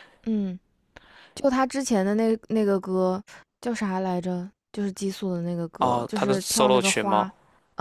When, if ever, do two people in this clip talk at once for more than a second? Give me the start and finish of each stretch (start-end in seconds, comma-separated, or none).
5.8-7.3